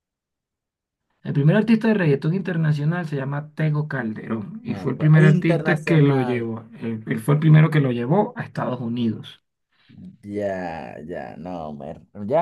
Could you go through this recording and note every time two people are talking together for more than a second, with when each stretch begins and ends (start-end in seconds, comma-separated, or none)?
4.6-6.5